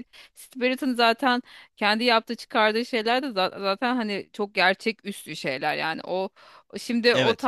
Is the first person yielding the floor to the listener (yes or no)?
yes